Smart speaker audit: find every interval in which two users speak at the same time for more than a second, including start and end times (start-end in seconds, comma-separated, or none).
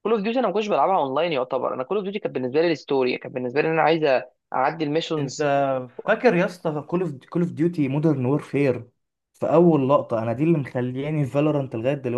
none